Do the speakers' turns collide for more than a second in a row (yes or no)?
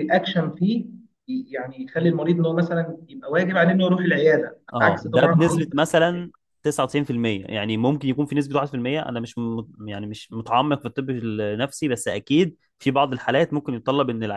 yes